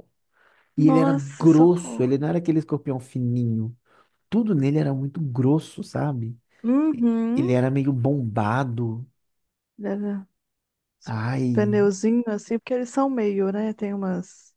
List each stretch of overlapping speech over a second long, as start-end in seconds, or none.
0.8-2.1